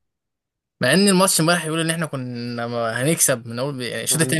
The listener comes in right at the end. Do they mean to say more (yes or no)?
no